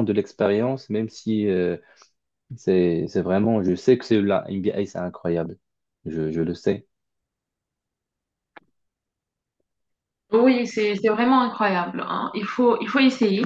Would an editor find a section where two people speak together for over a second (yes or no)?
no